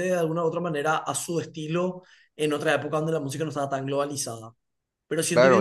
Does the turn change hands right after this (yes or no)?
yes